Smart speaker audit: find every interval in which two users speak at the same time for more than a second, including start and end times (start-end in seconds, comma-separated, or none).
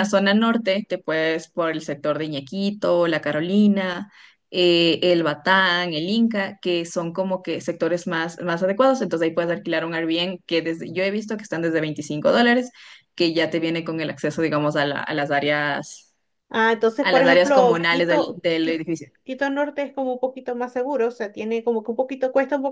17.0-18.8